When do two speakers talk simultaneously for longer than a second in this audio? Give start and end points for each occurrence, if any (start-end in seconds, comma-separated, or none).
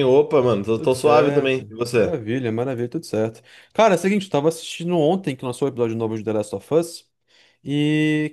0.7-2.2